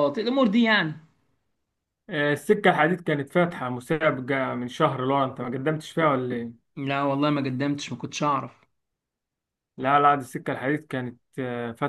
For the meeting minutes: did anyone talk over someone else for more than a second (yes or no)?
no